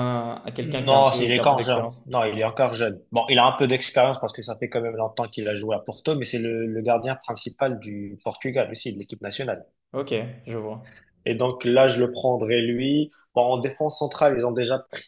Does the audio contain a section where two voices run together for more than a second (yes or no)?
yes